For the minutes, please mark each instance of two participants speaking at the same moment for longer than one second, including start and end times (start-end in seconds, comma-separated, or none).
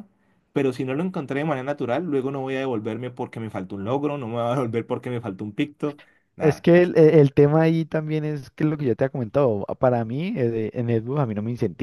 none